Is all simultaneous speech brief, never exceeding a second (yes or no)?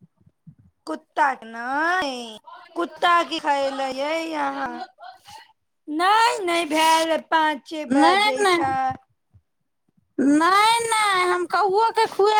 yes